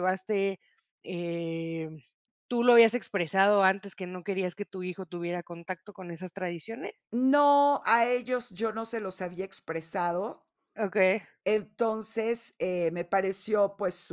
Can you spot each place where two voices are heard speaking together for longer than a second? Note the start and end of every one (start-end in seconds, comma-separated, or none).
none